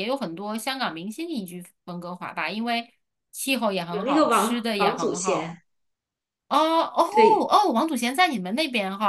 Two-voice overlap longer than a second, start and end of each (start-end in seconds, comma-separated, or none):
3.9-5.6